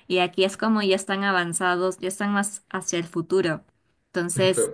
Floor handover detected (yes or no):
yes